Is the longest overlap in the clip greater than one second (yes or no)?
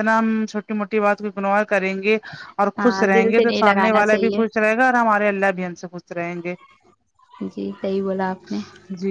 yes